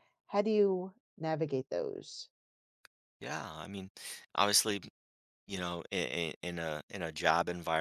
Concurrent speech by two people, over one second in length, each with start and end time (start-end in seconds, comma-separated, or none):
none